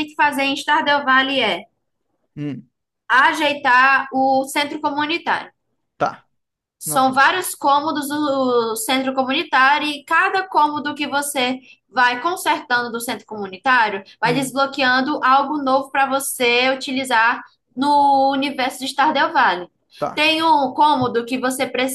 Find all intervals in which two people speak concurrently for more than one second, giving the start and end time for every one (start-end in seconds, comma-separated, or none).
none